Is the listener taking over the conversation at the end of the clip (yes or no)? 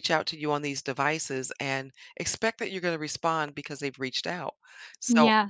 no